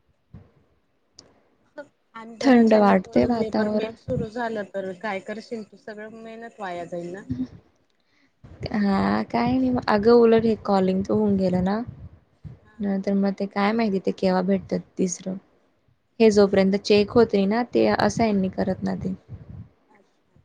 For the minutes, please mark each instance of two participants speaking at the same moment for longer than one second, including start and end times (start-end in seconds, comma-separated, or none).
2.4-3.9